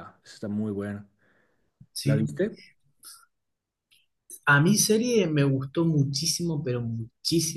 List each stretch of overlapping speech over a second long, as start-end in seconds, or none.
none